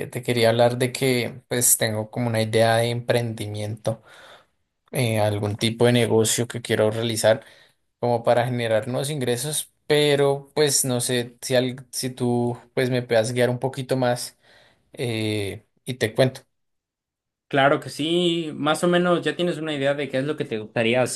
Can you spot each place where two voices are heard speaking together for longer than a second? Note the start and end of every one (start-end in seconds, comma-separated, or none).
none